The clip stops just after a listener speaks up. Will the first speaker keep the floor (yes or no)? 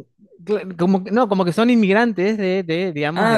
no